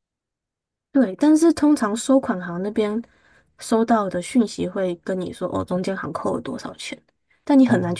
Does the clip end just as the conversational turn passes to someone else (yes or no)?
no